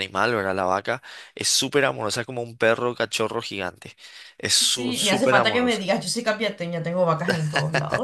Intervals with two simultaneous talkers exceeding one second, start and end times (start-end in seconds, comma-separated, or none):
4.6-5.8